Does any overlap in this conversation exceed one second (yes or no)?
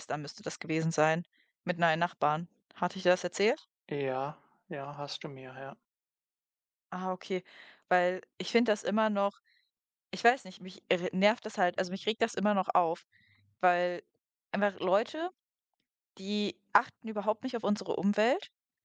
no